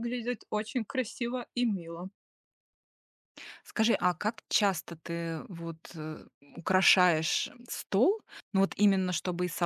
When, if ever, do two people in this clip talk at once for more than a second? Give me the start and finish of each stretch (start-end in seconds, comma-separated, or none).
none